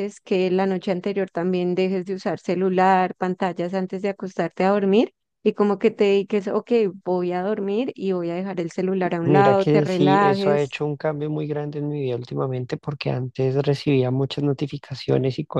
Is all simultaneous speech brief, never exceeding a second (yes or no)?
no